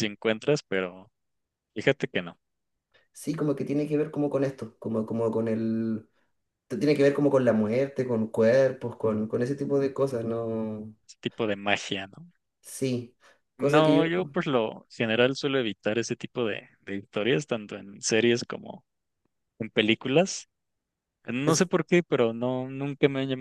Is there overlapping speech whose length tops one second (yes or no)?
no